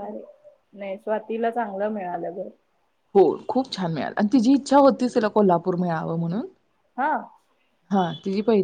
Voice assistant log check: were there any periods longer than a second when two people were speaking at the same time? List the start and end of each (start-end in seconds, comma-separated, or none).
none